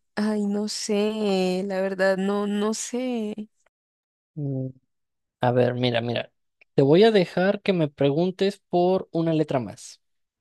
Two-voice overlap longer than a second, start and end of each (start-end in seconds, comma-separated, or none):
none